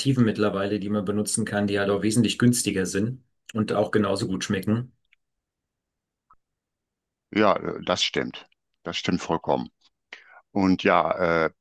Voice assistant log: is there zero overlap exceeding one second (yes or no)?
yes